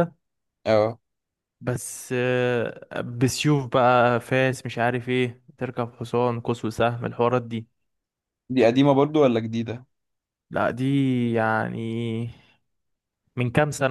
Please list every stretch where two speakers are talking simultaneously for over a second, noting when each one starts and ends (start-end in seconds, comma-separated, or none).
none